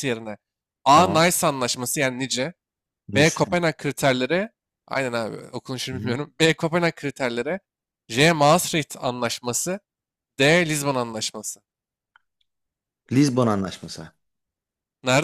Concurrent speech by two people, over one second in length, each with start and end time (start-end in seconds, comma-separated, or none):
none